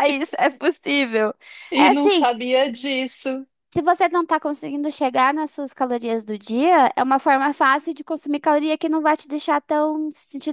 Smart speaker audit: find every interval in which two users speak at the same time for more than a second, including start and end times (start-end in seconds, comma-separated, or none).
none